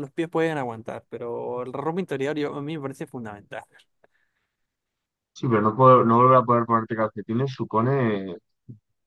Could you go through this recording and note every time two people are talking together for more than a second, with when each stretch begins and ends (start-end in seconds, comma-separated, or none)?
none